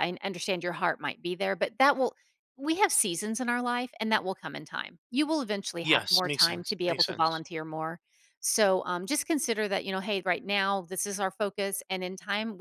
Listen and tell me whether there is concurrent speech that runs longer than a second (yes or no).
yes